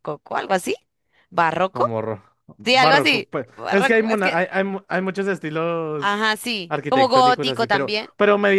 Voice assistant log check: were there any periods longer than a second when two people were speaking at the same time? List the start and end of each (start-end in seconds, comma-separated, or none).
2.6-4.4, 6.0-8.1